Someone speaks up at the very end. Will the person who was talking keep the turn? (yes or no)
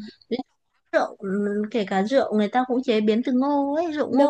no